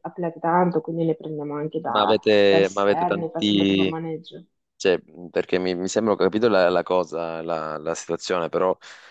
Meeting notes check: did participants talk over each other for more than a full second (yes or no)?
yes